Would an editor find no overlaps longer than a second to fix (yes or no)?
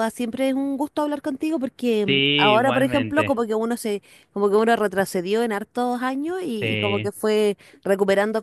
no